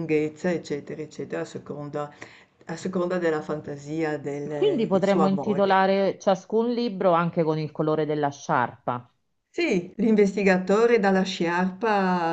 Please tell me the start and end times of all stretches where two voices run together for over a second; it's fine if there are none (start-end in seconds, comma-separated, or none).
4.5-5.8